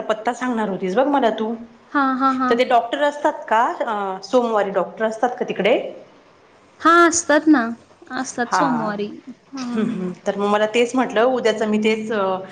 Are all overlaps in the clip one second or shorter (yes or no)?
yes